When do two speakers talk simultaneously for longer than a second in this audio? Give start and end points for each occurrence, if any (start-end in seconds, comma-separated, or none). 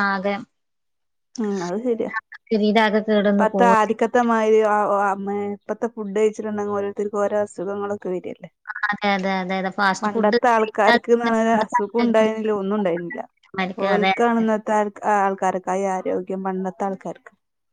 10.0-12.3